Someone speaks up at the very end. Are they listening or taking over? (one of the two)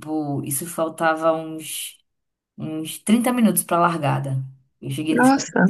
listening